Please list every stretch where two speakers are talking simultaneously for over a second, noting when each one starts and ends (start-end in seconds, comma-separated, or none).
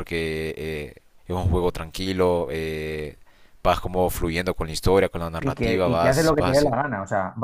5.4-6.7